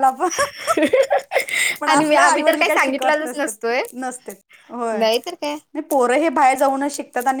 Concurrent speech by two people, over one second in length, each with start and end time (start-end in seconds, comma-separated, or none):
1.9-3.8